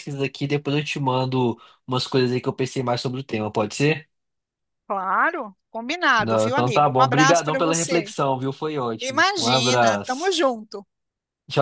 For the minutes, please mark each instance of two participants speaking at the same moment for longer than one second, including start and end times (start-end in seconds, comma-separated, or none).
6.2-8.1, 9.0-10.3